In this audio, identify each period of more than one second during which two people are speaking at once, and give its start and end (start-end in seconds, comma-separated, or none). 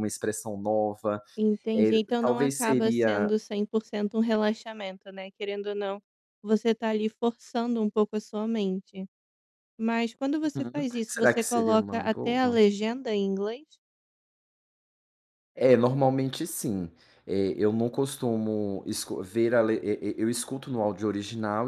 1.7-3.3, 10.5-12.6